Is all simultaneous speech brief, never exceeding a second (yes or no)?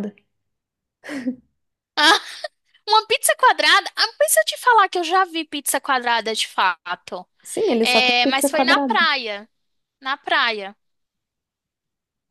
no